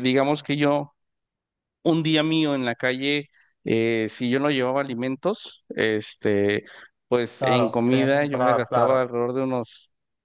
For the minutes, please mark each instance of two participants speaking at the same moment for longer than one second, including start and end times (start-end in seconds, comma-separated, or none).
7.4-9.1